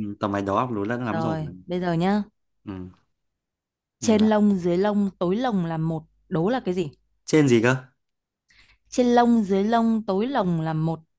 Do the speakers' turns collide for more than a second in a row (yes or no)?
no